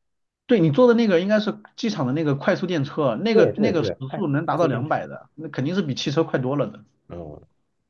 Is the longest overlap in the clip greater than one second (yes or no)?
yes